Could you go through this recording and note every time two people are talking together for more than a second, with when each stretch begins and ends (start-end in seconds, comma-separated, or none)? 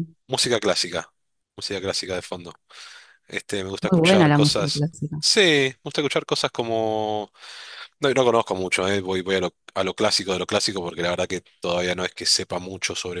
3.8-5.2